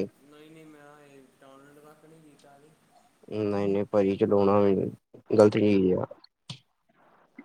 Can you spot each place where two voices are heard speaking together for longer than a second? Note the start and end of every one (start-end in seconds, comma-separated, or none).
none